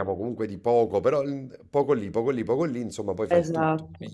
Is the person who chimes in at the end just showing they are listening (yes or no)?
no